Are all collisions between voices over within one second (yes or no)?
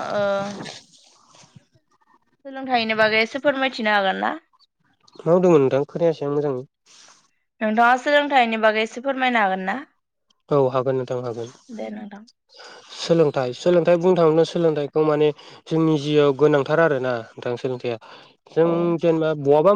yes